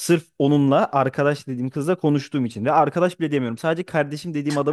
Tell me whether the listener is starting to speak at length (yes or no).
no